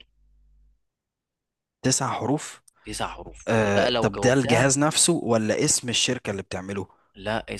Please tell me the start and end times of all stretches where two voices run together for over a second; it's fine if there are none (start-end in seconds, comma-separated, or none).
3.5-4.7